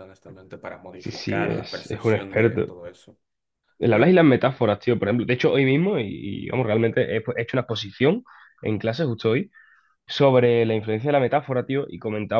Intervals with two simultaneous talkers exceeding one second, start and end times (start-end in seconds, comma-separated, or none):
1.0-2.7